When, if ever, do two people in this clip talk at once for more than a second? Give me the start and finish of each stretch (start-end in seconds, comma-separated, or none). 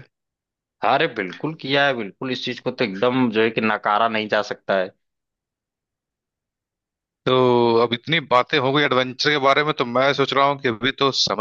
none